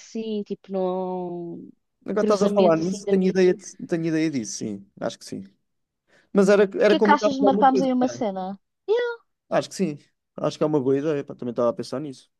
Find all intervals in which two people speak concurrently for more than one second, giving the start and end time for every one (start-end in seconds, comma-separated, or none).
2.2-3.5, 6.7-8.2